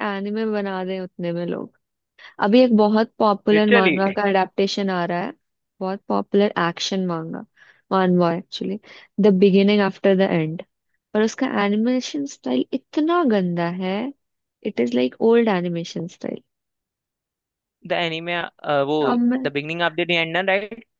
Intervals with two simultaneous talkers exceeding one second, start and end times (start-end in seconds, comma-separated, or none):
none